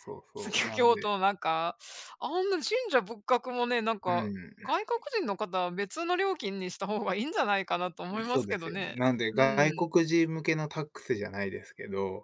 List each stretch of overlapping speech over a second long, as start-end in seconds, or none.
8.3-9.9